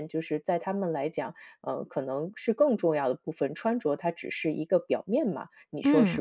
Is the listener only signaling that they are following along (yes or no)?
no